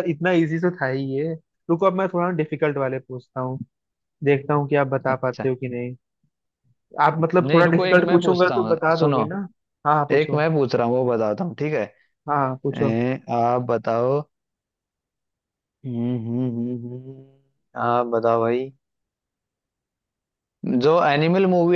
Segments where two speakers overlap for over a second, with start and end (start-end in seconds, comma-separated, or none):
7.4-9.2